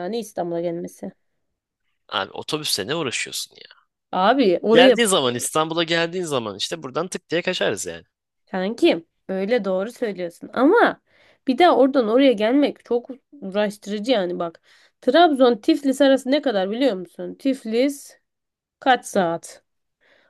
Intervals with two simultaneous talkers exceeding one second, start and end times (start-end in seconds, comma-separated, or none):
none